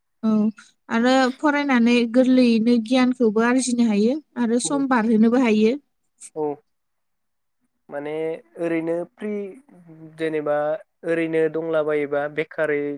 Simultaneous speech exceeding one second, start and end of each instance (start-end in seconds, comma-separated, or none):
none